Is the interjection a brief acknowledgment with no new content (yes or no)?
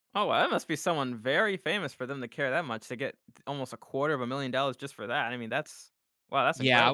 no